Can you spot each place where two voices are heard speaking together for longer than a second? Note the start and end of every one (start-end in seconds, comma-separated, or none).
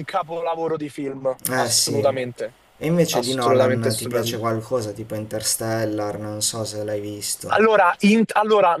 3.1-4.4